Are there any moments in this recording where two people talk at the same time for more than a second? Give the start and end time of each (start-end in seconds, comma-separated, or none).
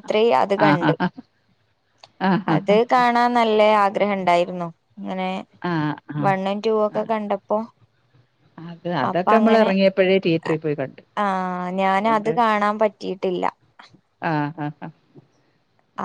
none